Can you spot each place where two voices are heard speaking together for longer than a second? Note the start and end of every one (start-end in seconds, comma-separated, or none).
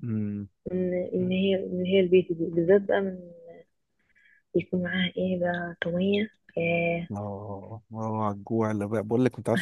none